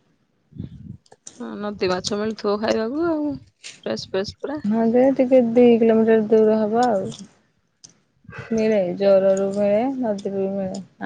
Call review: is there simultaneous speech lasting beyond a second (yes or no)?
no